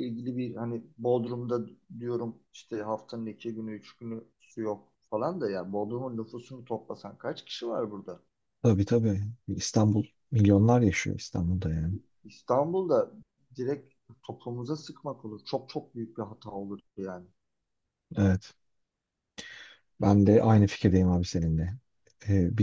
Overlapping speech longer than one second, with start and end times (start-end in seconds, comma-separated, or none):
none